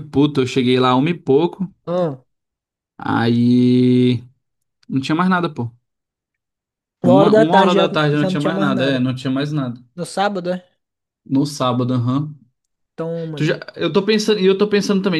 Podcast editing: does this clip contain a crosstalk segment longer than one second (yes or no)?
yes